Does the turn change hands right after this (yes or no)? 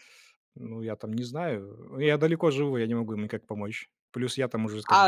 yes